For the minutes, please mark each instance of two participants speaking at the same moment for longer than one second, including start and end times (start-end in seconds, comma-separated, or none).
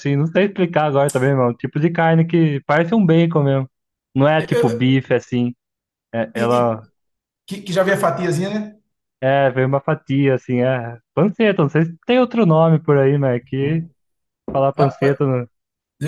none